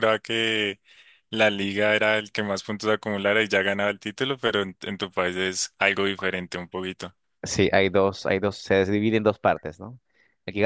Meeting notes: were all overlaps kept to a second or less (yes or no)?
yes